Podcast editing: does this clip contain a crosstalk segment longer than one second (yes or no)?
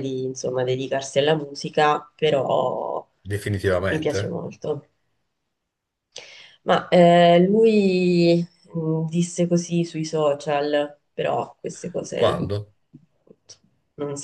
no